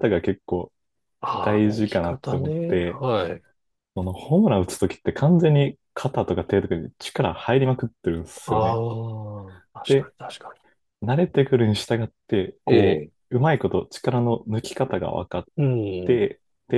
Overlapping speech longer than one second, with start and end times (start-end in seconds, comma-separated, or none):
1.4-3.0